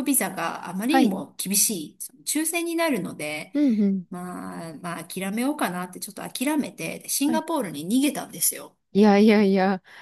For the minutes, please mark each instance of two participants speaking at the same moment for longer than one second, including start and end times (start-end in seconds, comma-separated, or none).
none